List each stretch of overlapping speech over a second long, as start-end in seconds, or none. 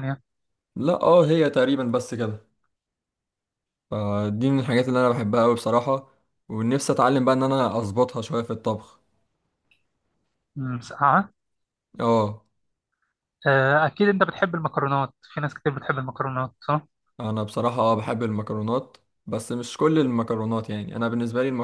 none